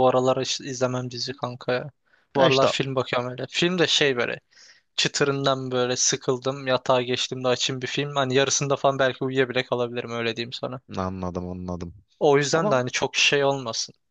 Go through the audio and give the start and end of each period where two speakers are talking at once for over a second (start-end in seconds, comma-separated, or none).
none